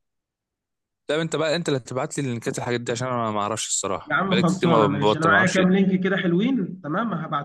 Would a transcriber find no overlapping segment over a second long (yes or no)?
no